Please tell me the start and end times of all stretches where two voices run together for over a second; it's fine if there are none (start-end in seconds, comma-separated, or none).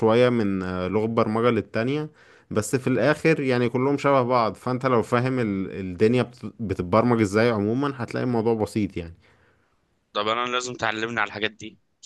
none